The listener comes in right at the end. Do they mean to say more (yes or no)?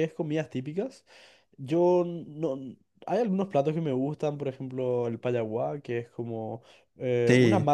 no